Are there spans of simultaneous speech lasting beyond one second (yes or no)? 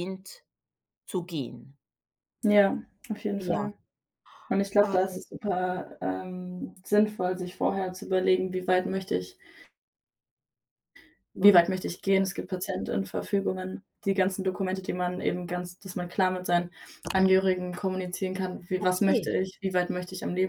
no